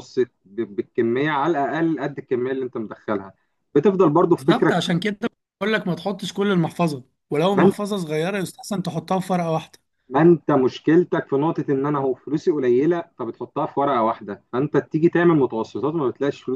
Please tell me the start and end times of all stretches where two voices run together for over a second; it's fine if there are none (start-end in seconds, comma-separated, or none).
none